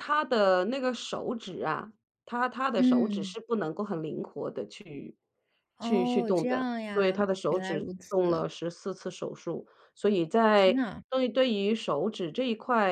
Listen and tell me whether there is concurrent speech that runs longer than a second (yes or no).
yes